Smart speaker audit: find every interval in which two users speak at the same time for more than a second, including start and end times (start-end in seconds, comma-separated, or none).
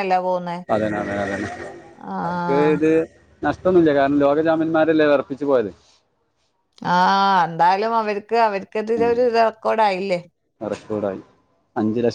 none